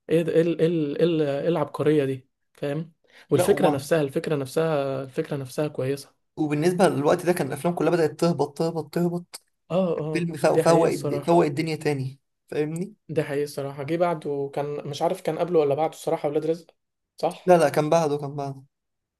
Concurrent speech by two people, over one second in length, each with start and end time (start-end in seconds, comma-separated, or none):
10.1-11.4